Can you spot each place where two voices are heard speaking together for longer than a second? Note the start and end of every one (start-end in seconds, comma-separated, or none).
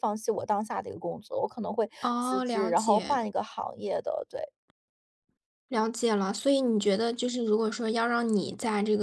2.0-3.2